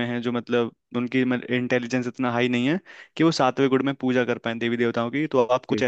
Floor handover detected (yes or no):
no